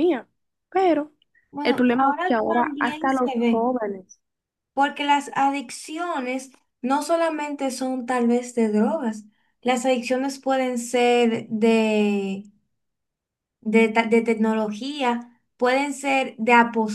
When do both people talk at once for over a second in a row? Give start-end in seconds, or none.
1.6-3.6